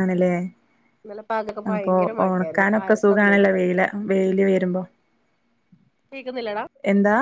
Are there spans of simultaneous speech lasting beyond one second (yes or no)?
yes